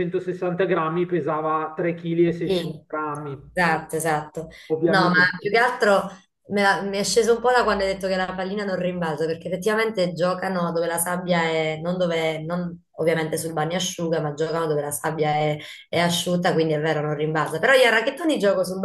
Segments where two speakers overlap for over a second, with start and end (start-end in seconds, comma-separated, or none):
none